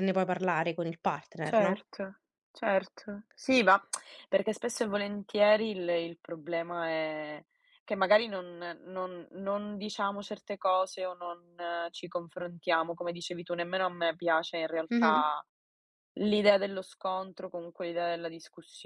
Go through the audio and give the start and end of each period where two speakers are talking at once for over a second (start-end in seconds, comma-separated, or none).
none